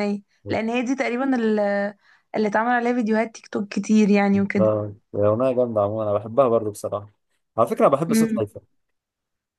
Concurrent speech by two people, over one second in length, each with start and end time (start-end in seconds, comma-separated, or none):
none